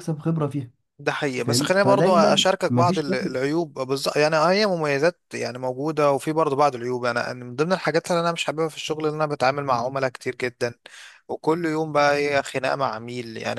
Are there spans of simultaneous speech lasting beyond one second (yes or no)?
yes